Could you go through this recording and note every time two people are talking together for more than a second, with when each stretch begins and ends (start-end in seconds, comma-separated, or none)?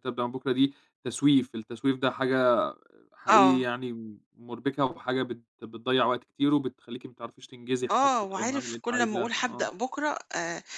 7.9-9.7